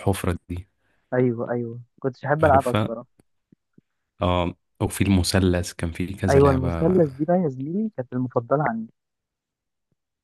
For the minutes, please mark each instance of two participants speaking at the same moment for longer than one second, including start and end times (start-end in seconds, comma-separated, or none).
none